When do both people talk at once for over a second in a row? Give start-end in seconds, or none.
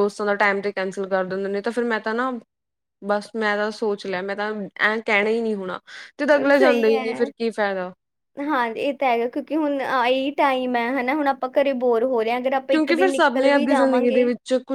12.7-14.2